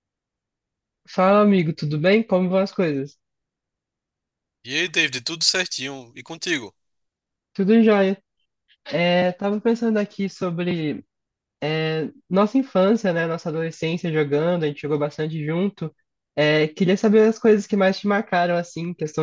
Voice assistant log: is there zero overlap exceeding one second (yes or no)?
yes